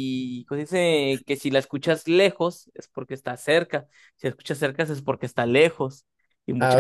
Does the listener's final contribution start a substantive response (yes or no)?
yes